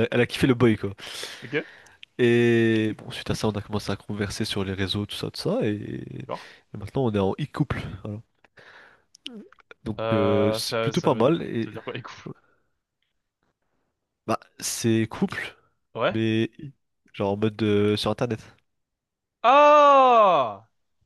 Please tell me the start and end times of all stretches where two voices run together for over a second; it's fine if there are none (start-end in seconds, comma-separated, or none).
10.0-11.7